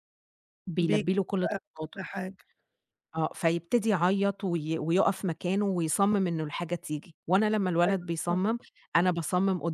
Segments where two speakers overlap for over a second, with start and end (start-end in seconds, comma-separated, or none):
0.8-2.0